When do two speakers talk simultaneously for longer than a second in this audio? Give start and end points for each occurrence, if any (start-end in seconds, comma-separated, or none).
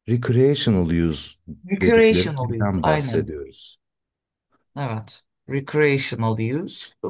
1.8-3.3